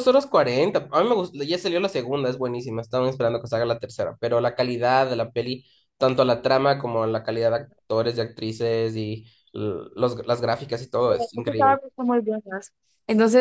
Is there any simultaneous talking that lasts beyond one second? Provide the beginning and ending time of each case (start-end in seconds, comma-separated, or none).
none